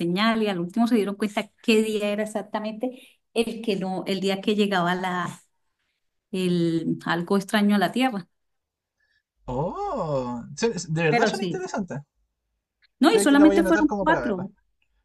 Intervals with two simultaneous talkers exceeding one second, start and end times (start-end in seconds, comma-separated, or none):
13.0-14.5